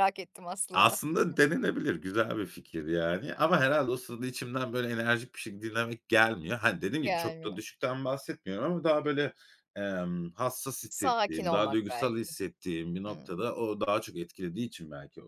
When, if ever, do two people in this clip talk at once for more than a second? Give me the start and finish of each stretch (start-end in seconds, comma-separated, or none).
10.9-12.3